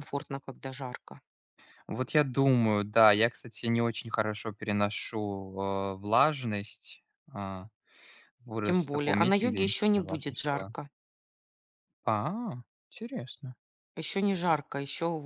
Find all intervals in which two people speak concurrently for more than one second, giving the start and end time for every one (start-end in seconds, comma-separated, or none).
8.6-10.7